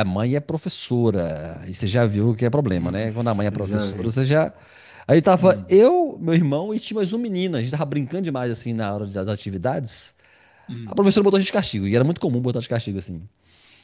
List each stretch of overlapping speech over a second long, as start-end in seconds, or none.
2.7-4.2